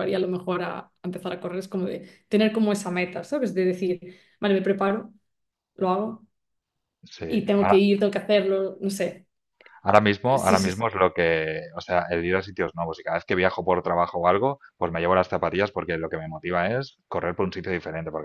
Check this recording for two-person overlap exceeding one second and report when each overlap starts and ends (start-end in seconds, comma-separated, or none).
none